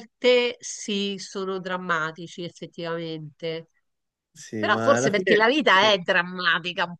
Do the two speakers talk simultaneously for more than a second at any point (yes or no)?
yes